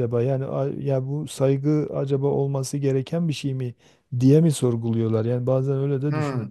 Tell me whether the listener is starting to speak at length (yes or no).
yes